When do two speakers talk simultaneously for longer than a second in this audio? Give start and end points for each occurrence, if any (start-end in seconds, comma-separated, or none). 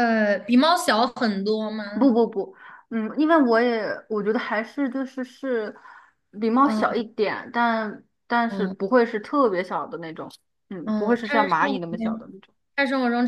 10.8-12.3